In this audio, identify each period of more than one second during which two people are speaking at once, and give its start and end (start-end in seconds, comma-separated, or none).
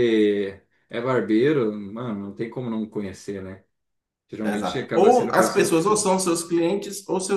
4.4-6.1